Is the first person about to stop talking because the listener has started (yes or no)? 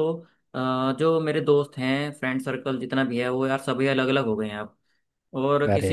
no